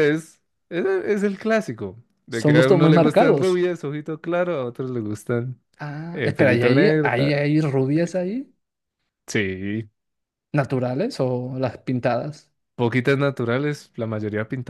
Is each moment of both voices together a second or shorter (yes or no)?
no